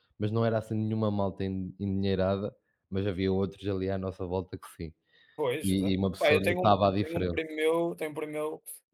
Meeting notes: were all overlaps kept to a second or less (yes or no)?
no